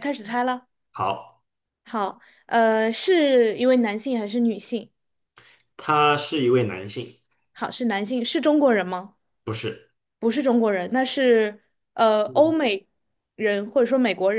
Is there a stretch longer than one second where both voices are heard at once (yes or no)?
no